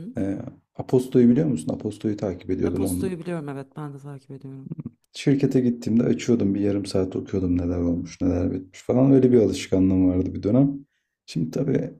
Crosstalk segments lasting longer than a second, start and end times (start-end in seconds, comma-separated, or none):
none